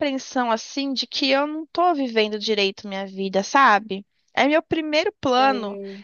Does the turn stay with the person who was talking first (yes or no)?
yes